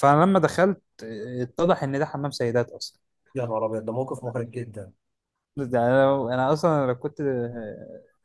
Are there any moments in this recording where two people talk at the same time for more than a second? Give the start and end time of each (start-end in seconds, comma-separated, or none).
none